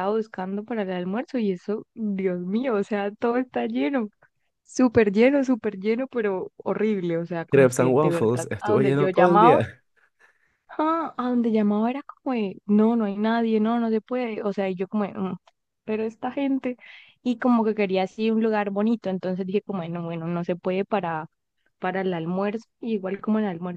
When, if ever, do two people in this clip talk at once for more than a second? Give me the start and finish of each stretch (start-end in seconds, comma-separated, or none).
7.5-9.6